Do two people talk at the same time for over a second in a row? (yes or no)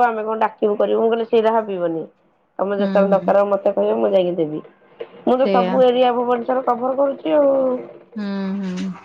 no